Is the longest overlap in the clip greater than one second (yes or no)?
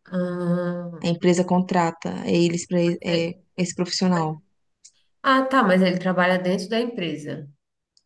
no